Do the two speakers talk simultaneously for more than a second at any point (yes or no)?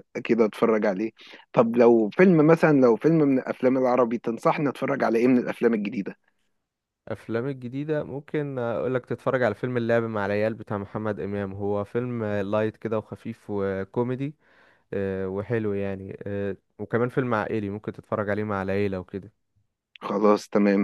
no